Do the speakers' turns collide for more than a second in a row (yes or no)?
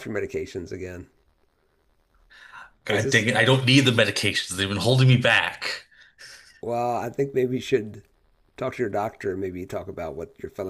no